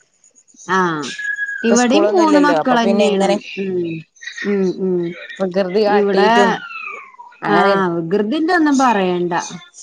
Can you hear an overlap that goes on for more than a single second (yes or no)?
yes